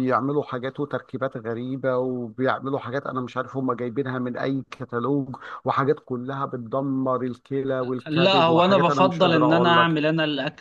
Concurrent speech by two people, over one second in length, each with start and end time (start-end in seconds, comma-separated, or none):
8.1-10.0